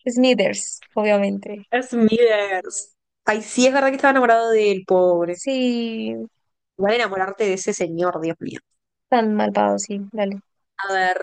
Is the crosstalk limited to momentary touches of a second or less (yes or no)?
yes